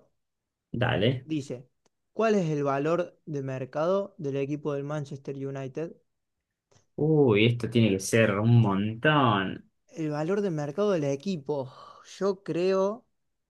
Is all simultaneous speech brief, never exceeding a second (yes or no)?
yes